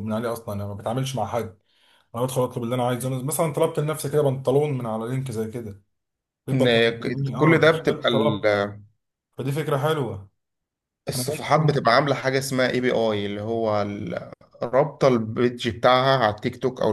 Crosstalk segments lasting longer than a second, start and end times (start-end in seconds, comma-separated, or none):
6.5-8.6